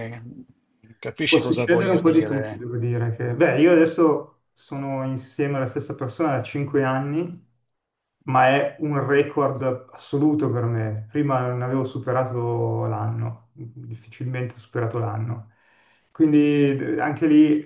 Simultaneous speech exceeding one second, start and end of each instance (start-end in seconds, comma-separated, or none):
1.3-2.6